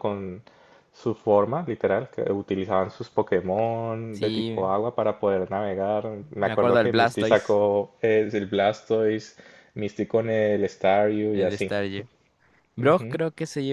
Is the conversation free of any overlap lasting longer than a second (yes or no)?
no